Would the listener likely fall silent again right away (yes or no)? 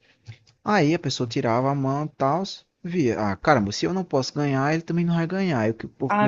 yes